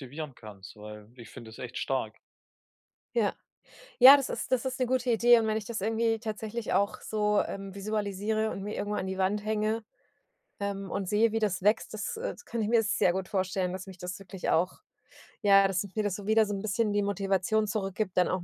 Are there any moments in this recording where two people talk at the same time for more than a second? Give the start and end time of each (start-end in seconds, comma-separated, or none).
none